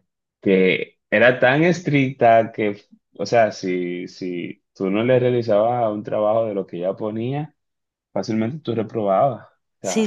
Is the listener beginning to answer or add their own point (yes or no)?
yes